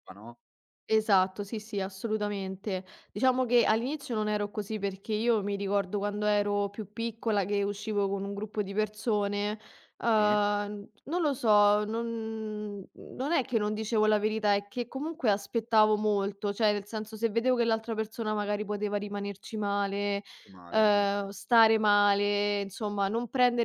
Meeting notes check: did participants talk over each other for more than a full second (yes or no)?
no